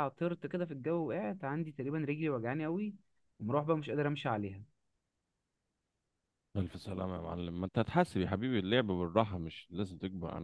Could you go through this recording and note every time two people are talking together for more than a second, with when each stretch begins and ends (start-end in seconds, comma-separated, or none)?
none